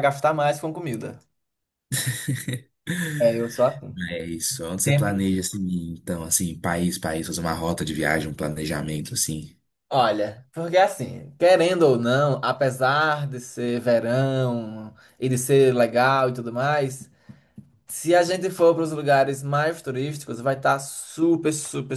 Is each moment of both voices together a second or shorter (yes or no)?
yes